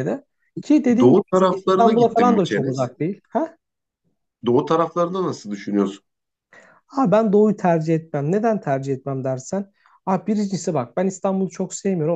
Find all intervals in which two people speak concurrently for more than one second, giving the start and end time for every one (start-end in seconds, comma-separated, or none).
1.0-2.9